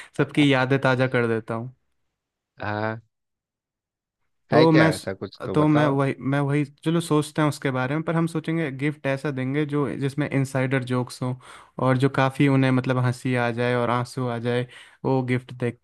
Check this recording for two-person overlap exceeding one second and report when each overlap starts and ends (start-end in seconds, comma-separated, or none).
none